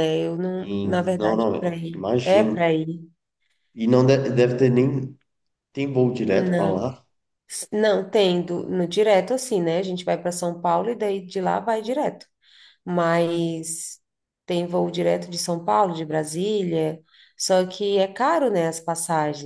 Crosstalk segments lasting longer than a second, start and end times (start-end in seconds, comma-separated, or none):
0.6-2.6